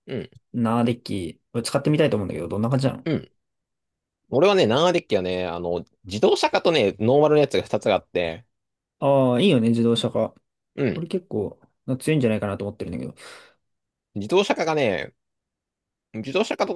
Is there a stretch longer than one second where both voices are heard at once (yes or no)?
no